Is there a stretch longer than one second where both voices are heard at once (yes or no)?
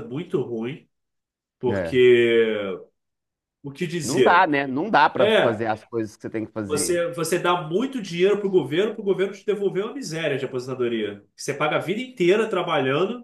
no